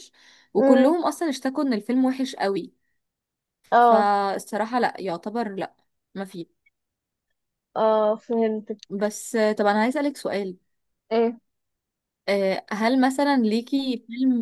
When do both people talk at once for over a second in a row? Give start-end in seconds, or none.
none